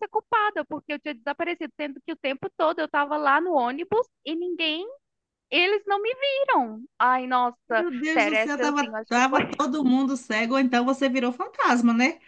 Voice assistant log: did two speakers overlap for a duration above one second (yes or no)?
yes